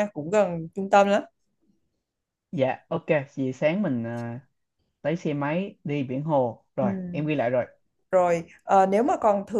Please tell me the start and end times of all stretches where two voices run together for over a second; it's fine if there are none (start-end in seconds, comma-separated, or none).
none